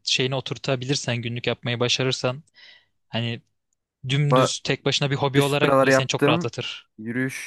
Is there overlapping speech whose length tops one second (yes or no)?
yes